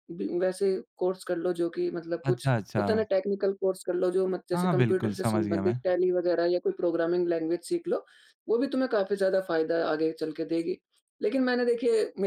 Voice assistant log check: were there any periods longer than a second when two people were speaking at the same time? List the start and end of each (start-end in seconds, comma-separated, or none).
4.5-5.8